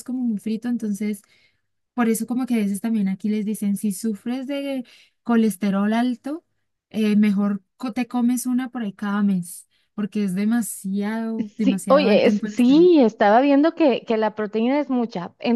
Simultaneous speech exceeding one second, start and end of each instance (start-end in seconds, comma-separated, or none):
11.6-12.9